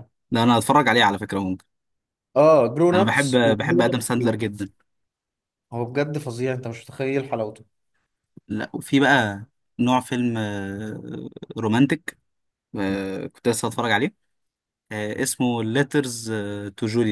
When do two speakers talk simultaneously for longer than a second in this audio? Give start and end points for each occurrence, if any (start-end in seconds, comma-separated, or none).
2.9-4.4